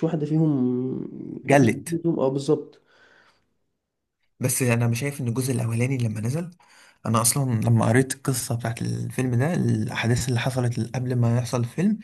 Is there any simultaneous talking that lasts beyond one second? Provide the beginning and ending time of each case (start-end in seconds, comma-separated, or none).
none